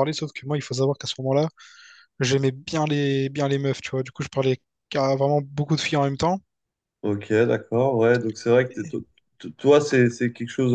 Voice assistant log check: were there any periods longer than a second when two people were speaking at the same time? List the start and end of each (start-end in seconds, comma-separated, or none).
none